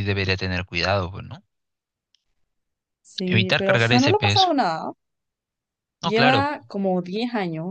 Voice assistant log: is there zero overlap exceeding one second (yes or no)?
no